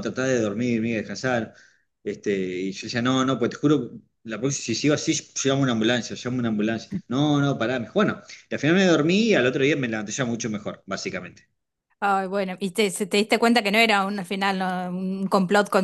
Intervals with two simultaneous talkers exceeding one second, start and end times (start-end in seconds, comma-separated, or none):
none